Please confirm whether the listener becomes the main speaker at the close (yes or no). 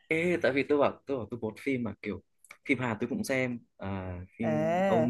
yes